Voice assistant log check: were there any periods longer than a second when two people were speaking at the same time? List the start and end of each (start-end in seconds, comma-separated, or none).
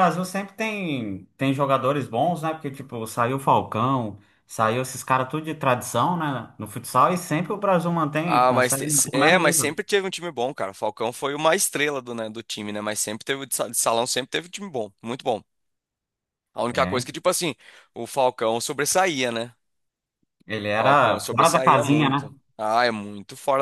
8.2-9.8, 20.8-22.3